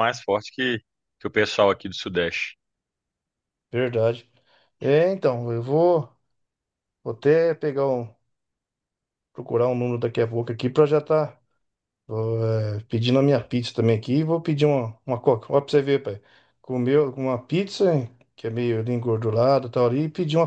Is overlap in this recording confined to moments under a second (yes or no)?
yes